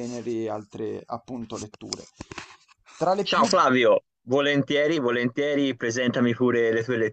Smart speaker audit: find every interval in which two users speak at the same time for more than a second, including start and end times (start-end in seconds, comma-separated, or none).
none